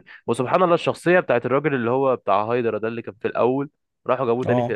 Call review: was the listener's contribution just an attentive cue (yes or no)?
yes